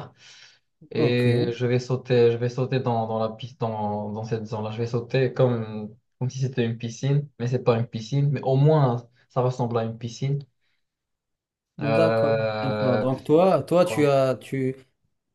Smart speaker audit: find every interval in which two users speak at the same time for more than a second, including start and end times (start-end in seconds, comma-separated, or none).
11.8-13.1